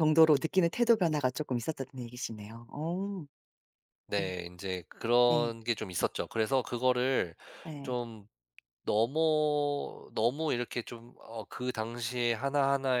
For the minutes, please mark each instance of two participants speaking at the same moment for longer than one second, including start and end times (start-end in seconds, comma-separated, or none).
none